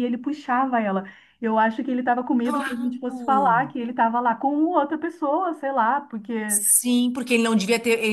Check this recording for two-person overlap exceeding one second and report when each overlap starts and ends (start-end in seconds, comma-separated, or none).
2.4-3.7